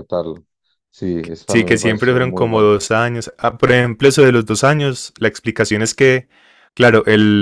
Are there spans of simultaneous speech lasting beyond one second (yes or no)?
yes